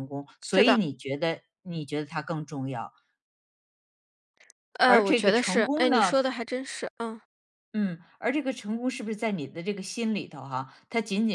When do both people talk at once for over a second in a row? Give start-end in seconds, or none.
4.8-6.2